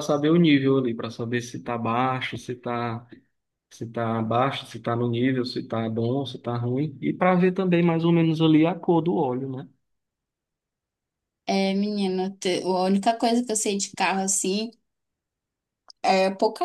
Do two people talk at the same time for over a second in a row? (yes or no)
no